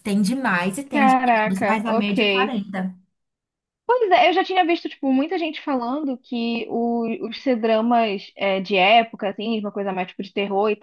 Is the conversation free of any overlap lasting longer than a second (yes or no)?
no